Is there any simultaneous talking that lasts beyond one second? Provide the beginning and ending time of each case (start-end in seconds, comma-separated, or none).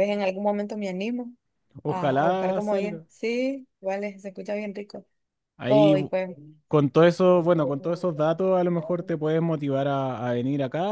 1.9-3.0